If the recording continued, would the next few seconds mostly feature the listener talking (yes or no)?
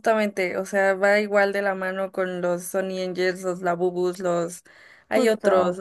no